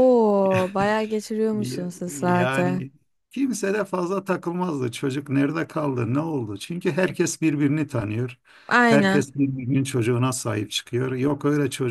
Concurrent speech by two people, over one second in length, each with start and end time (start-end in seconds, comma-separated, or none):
1.5-2.8